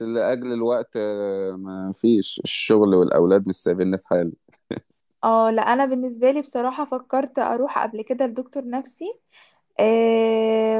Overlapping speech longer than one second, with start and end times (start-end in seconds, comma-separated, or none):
none